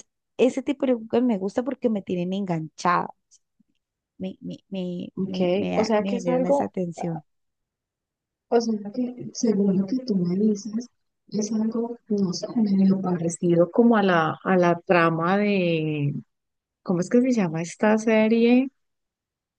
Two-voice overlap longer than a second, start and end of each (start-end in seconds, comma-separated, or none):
5.3-6.7